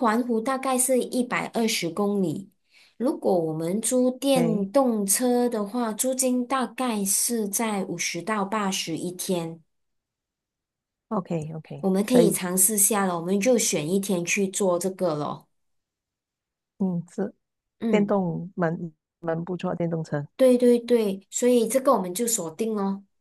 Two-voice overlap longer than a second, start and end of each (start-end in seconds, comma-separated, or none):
none